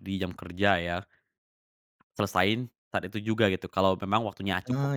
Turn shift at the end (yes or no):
no